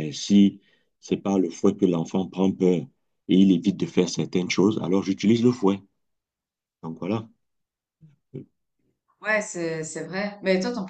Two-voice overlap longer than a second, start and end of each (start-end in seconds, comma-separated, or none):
none